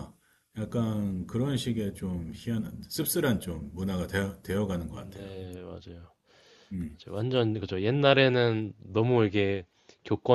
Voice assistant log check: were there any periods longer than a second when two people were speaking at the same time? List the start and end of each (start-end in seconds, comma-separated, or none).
none